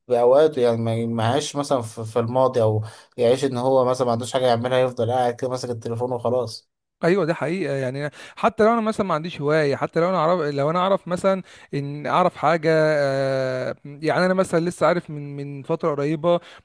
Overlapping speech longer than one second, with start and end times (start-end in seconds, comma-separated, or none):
none